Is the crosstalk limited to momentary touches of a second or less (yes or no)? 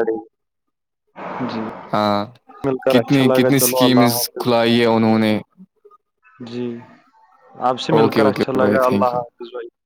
no